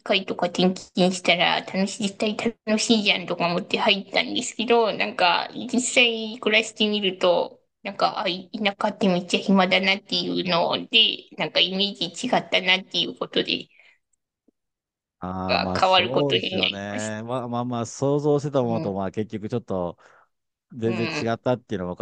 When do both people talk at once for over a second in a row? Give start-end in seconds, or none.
15.5-17.2